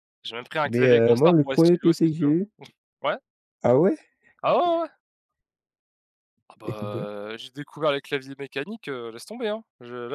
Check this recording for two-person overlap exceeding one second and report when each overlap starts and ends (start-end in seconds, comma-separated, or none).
0.7-2.4